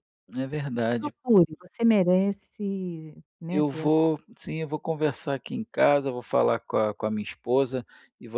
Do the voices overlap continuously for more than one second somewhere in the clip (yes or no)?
no